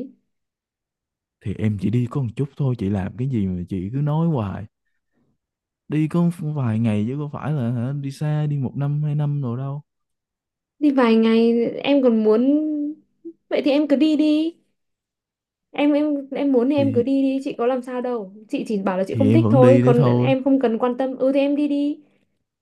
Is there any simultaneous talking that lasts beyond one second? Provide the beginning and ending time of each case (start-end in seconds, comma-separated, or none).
19.1-20.3